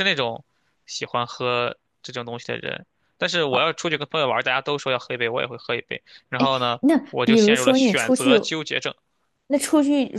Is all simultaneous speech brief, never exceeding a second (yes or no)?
no